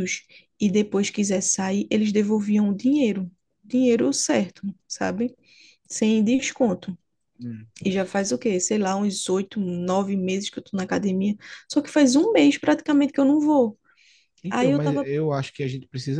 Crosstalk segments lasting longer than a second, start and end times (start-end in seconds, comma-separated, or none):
none